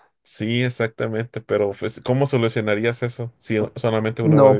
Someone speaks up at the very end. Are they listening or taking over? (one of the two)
taking over